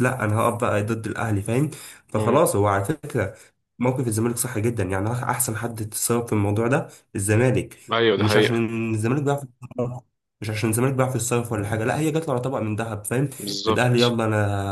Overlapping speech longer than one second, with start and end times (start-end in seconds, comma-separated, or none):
none